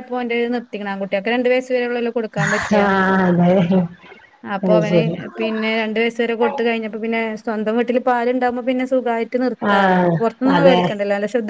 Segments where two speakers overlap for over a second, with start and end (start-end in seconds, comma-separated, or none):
none